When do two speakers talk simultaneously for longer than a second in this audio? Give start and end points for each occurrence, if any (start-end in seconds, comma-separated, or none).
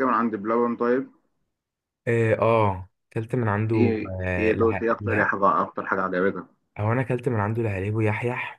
3.7-5.3